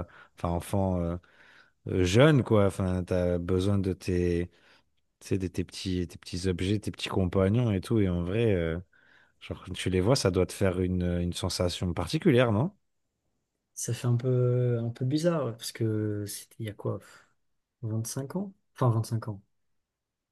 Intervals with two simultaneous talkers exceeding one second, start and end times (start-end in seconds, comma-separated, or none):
none